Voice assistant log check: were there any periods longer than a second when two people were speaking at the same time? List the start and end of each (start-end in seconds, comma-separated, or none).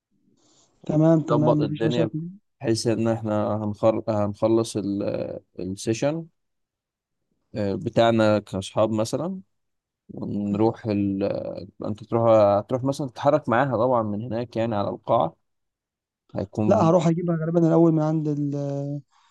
0.9-2.1